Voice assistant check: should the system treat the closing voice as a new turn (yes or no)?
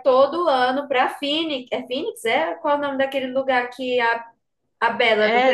yes